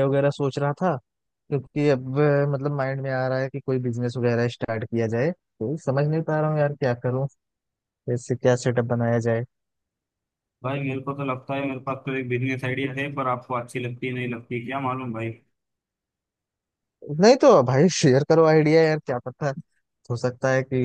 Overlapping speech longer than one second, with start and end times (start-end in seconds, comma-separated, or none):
none